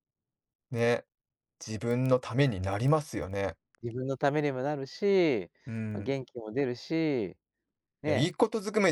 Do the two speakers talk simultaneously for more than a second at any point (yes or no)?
no